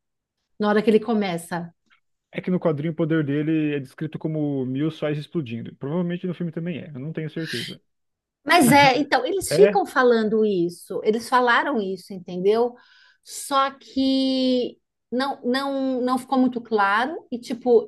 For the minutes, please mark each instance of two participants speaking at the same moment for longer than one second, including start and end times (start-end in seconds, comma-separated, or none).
none